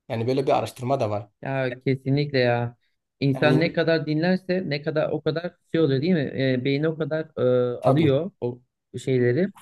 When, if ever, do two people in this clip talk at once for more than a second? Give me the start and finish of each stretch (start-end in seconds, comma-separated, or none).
none